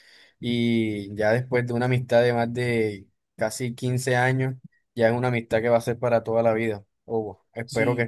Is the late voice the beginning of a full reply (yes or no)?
yes